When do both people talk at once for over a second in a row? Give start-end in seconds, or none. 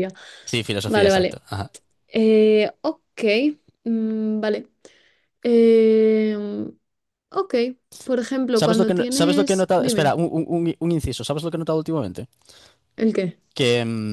8.6-10.2